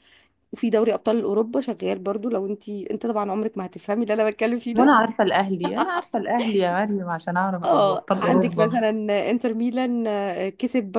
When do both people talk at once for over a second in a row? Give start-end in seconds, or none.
7.7-8.8